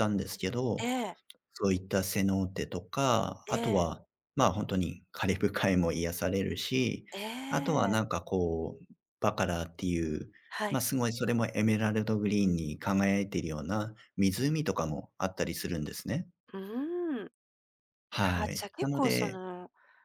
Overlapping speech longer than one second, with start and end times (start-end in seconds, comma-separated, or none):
18.2-19.4